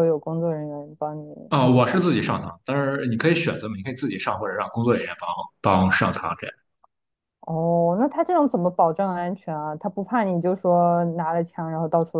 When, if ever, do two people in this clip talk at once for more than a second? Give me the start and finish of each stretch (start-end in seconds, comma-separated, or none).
none